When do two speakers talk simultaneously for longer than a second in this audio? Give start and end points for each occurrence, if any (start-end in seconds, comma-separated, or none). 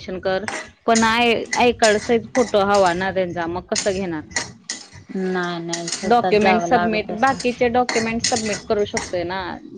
6.1-7.4